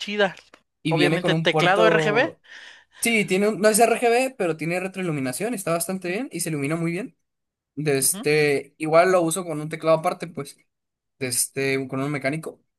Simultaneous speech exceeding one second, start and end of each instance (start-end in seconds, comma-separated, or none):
0.9-2.4